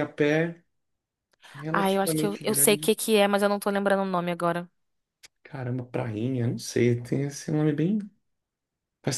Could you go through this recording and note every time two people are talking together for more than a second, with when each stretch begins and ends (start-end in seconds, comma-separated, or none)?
1.7-2.9